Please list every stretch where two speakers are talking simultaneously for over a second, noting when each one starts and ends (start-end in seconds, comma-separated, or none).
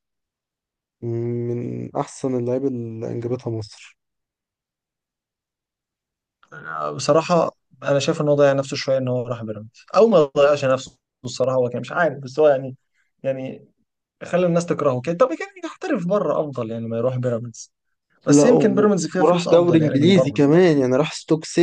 18.3-20.4